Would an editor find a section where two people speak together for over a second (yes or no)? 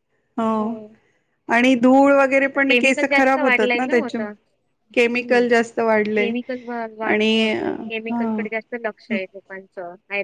yes